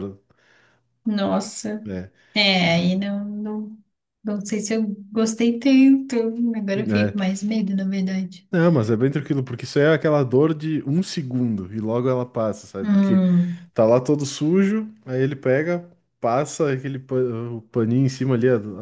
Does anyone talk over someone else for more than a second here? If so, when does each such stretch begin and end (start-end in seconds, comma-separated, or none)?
none